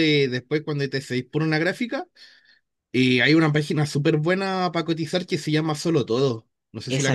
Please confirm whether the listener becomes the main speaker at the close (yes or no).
yes